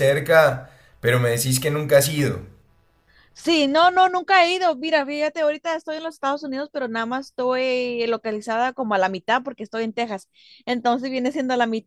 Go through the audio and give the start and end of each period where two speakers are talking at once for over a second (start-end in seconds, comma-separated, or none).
none